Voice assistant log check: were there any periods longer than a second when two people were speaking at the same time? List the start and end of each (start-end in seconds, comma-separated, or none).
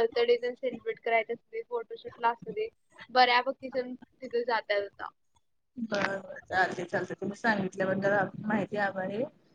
none